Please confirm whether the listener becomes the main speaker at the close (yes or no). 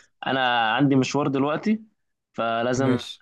no